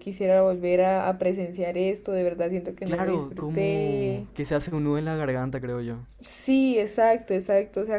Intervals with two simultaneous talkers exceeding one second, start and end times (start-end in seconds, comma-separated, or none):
2.8-4.3